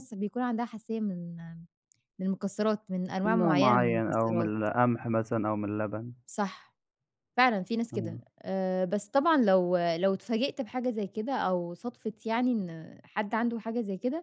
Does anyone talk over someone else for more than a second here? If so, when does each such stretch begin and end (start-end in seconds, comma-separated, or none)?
3.2-4.5